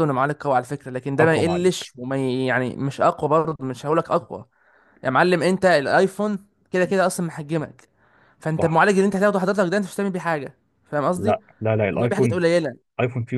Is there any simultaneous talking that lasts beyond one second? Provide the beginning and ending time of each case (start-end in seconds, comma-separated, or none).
none